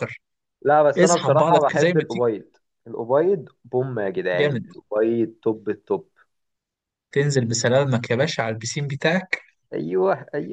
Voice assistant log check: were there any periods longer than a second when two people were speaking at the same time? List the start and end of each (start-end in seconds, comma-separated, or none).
1.0-2.3